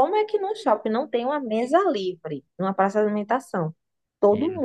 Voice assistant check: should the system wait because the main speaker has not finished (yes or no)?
yes